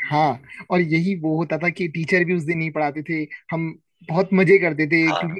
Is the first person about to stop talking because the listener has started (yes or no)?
no